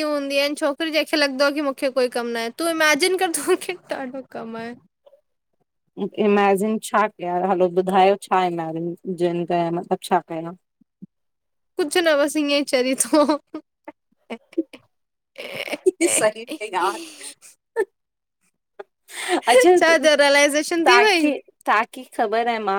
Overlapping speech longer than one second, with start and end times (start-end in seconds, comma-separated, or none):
19.8-21.3